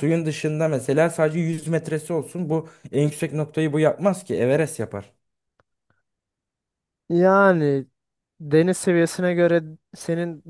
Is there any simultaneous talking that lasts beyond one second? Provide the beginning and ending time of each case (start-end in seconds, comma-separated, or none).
none